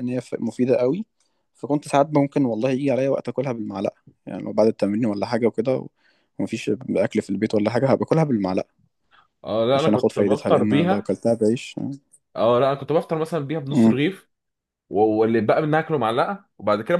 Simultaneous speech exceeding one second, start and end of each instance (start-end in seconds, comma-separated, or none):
9.7-11.1